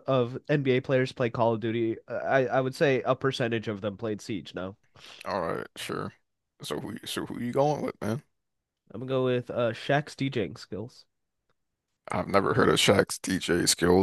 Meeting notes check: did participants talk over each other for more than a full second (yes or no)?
no